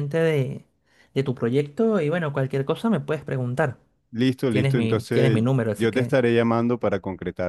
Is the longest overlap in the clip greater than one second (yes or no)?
yes